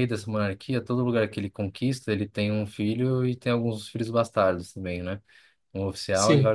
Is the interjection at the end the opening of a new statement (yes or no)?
no